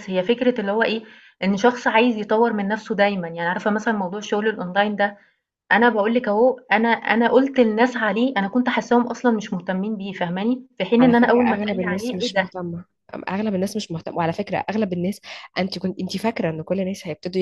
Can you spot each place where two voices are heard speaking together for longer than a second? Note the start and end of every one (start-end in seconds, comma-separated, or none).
11.0-12.5